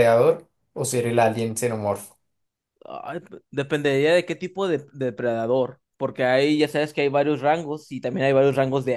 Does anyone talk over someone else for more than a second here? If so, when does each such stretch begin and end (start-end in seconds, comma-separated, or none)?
none